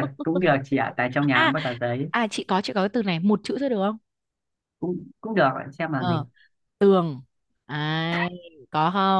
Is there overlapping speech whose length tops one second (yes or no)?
no